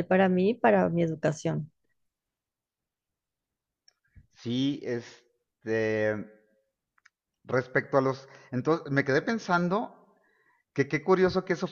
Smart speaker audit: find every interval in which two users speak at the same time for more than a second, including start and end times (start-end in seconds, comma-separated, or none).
none